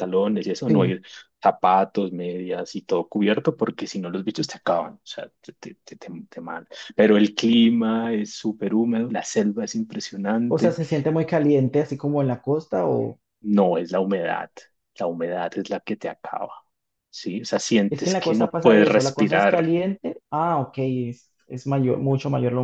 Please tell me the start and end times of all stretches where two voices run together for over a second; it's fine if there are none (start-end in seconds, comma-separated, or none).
17.9-19.7